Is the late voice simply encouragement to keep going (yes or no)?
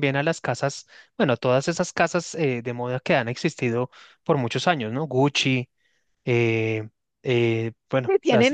no